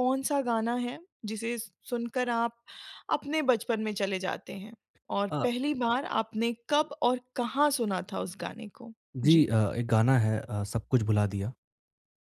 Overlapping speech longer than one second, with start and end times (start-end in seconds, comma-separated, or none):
none